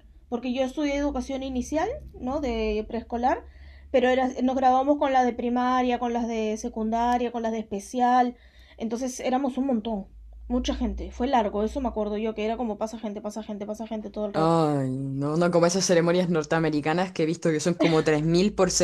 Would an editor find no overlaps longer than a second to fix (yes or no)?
yes